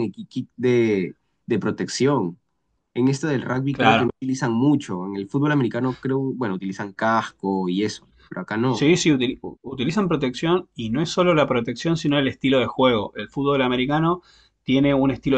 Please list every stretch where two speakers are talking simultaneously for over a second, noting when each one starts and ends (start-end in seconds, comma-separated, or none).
none